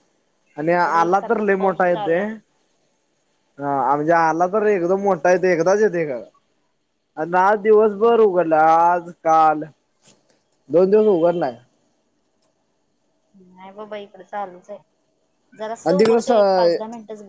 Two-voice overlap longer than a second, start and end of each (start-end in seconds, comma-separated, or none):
0.7-2.2